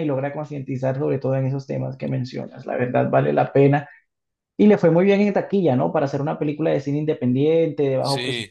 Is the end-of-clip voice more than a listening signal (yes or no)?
no